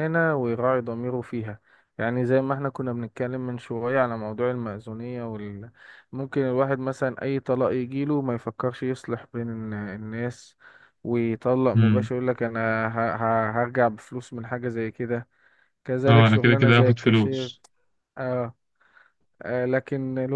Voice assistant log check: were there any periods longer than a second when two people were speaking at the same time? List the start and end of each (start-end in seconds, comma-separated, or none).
16.1-17.5